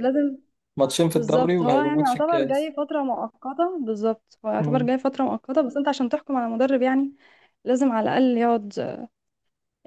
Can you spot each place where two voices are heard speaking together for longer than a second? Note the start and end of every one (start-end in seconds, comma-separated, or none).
1.1-2.7